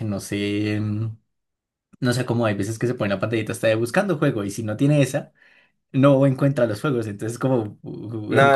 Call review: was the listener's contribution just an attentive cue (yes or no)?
no